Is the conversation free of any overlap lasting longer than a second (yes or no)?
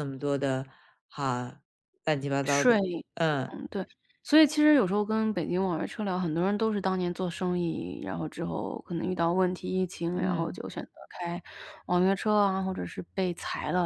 yes